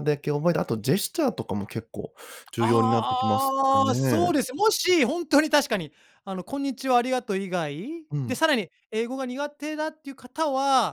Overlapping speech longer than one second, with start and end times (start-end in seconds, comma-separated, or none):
2.6-4.3